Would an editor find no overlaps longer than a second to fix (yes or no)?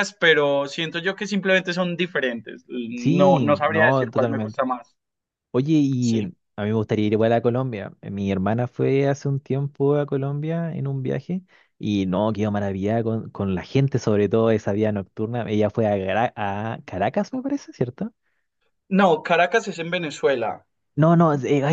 no